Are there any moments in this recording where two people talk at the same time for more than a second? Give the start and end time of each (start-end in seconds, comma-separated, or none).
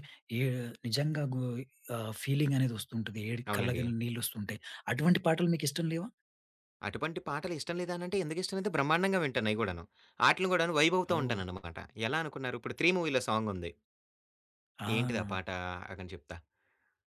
none